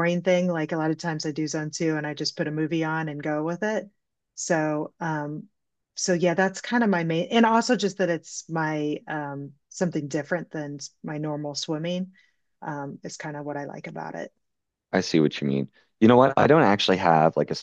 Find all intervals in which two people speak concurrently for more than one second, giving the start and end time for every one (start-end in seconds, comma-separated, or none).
none